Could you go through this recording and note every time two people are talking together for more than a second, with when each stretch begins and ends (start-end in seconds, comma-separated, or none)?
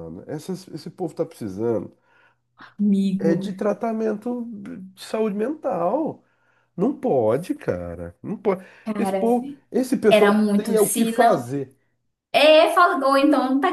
10.1-11.4